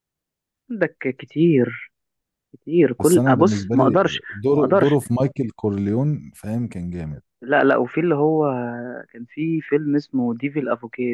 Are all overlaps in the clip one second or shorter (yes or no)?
no